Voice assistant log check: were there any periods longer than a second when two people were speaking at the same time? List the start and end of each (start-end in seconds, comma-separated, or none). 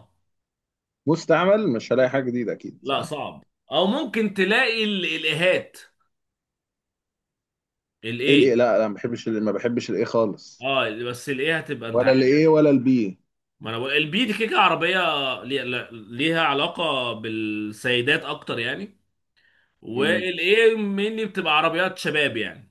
none